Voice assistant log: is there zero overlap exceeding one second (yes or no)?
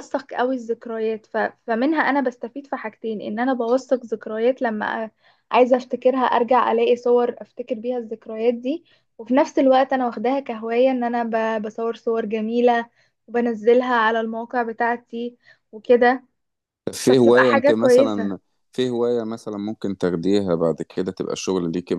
no